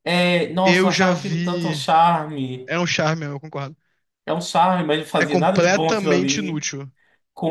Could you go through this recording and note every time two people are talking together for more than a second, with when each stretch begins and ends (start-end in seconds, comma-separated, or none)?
0.6-1.8, 5.2-6.6